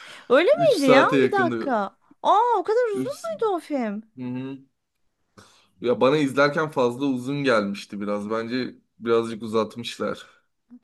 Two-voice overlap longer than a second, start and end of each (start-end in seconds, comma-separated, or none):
0.5-1.8